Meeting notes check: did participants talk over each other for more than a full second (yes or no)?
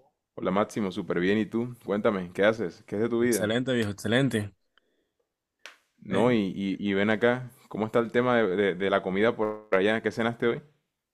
no